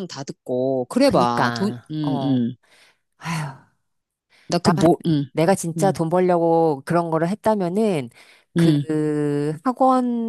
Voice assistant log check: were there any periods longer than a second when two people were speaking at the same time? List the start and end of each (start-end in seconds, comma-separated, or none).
1.0-2.4